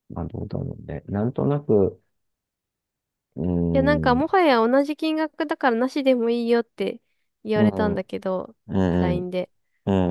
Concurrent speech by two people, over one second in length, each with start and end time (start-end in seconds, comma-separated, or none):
none